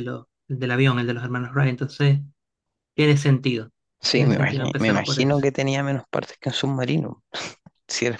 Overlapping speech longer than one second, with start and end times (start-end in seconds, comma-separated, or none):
4.1-5.4